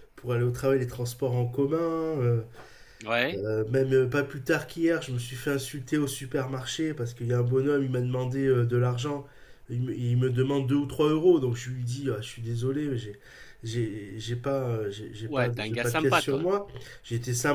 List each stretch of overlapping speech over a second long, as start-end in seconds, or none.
15.2-16.5